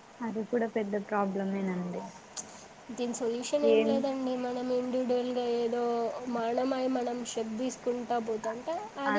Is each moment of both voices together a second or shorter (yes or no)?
yes